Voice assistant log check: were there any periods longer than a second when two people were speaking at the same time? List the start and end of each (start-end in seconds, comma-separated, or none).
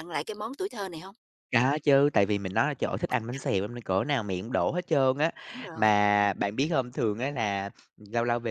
none